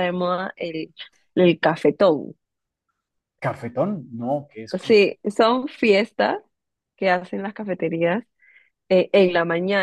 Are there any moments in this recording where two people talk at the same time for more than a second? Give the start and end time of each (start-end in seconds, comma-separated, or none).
none